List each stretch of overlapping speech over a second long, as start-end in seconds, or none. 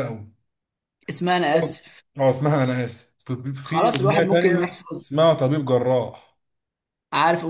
3.6-5.0